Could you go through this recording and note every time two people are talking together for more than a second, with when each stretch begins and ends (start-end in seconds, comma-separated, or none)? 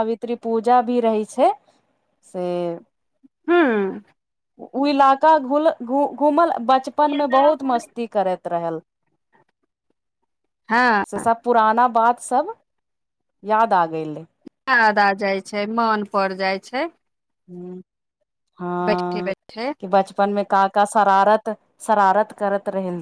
none